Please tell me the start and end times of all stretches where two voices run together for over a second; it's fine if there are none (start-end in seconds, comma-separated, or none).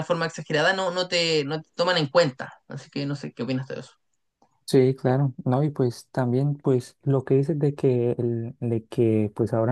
none